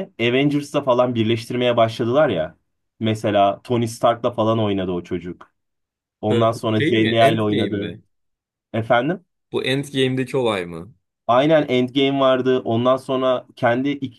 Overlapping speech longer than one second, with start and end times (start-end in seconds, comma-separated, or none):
6.3-8.0